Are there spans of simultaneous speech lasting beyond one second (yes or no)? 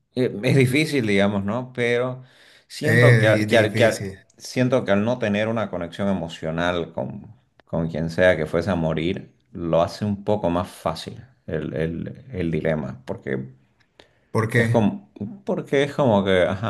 yes